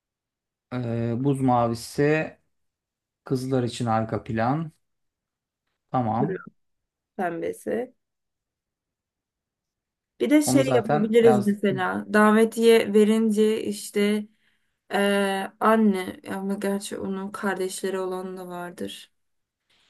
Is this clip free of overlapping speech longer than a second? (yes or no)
no